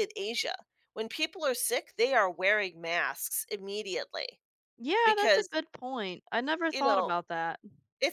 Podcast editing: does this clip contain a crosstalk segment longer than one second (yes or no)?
no